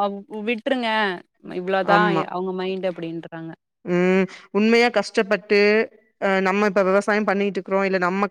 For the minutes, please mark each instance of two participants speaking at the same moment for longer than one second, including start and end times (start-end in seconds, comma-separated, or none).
none